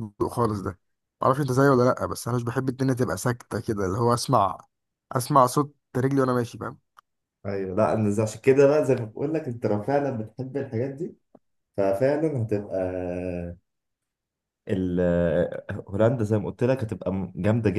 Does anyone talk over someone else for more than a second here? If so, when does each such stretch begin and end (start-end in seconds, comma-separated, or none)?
none